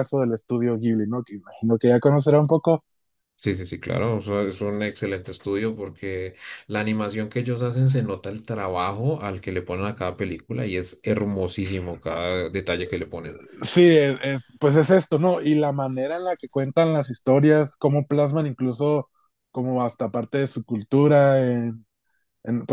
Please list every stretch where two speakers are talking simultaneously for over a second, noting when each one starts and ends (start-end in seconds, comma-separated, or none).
none